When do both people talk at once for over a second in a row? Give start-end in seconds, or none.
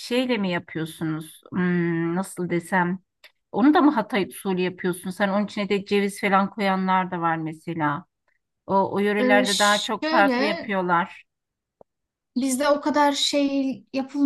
9.2-10.7